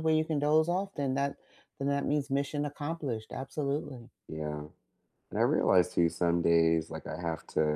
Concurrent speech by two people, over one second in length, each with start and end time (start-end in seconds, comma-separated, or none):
none